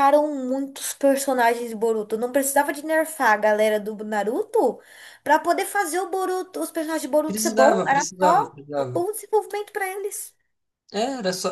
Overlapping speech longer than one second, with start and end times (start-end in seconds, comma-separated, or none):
7.3-9.0